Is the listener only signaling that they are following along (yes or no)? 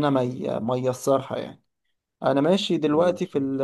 yes